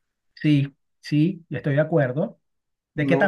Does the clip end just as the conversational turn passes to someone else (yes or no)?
yes